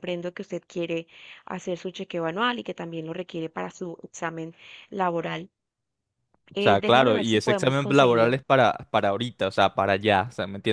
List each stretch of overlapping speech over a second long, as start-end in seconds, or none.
6.6-8.3